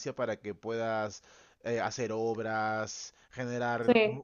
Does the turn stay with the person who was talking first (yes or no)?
yes